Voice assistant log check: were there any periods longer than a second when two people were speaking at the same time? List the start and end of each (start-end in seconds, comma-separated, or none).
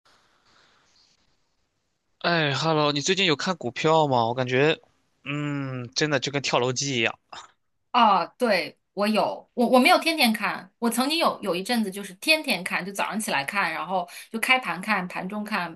none